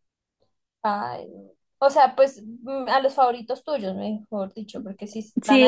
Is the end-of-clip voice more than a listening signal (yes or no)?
yes